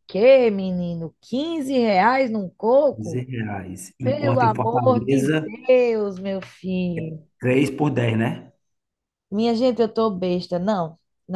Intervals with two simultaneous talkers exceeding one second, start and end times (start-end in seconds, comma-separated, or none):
4.0-5.2